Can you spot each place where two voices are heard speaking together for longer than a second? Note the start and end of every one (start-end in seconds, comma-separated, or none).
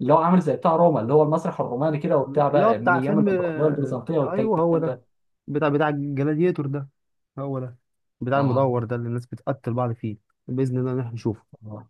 2.3-5.0